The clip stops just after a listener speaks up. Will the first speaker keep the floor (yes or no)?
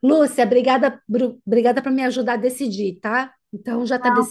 no